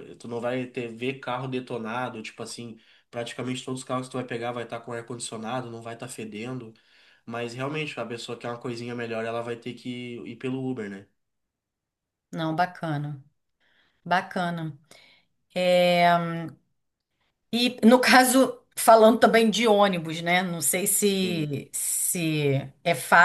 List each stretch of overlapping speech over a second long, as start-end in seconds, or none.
none